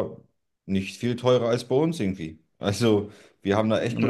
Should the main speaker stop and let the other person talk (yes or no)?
no